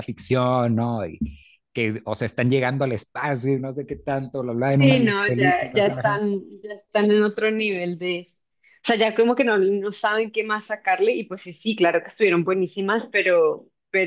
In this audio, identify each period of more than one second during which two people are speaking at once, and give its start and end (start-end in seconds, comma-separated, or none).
4.8-6.2